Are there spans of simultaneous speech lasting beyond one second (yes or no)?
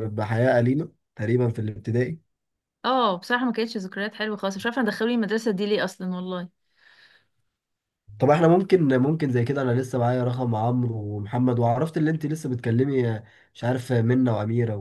no